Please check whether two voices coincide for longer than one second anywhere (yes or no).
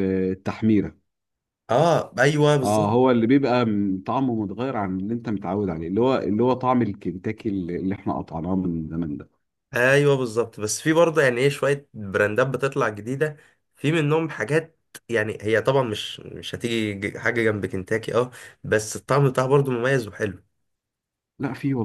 no